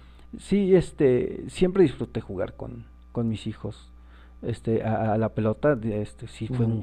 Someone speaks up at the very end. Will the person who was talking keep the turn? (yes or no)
yes